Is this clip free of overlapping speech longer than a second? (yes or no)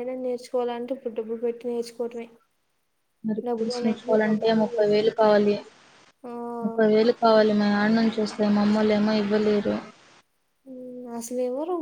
no